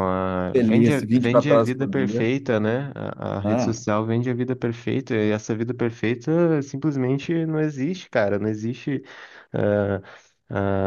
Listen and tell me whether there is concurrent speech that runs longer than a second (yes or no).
yes